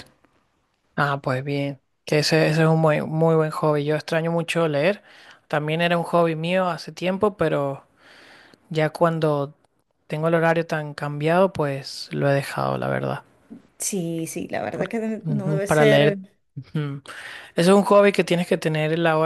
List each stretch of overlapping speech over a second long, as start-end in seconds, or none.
14.7-16.2